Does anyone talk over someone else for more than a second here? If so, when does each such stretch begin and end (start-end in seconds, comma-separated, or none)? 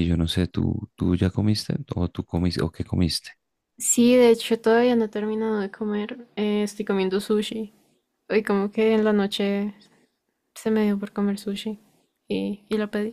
none